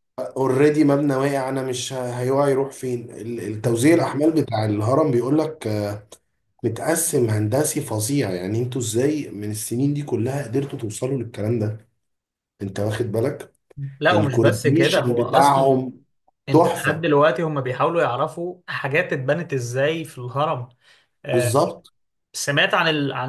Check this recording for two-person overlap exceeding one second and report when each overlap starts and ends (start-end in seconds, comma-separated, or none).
14.1-15.8